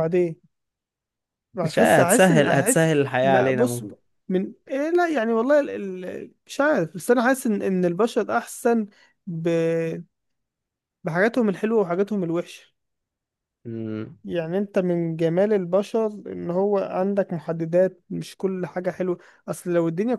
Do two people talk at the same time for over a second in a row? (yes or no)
yes